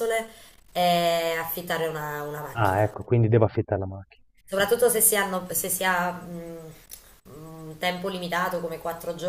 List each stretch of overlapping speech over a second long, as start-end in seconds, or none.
none